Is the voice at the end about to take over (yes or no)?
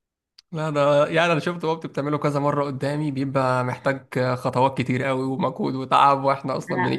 yes